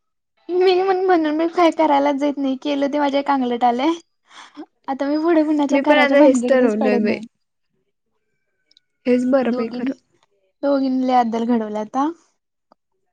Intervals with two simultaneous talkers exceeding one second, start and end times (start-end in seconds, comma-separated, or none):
5.7-7.1